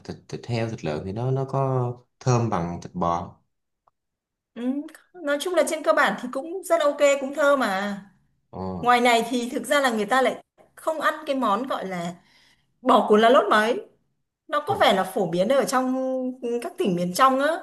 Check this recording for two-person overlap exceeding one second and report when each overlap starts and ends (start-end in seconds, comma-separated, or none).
none